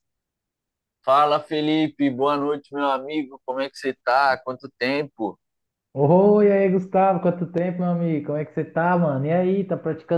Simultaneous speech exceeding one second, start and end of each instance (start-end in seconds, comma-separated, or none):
none